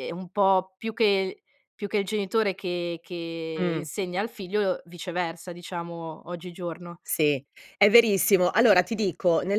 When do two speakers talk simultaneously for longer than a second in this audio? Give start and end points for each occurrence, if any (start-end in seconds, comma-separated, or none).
none